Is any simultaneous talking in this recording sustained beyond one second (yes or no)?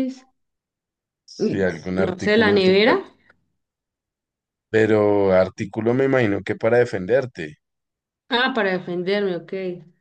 yes